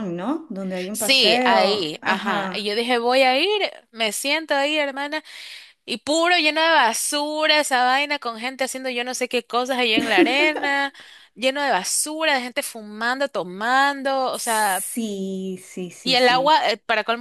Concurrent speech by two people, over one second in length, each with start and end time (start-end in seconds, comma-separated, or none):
0.9-2.7